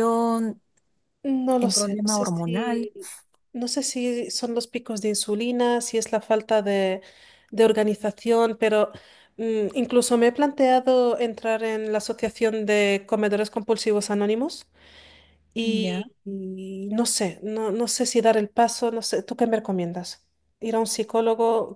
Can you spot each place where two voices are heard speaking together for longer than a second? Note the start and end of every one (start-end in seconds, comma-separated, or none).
1.6-2.9